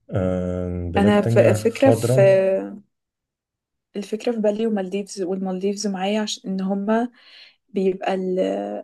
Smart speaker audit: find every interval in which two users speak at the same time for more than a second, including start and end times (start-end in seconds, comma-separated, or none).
1.0-2.2